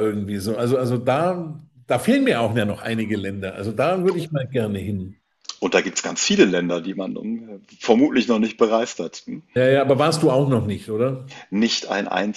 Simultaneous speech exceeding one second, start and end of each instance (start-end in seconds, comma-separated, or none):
none